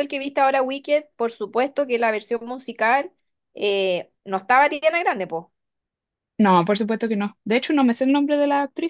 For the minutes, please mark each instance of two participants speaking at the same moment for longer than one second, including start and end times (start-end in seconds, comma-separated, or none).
none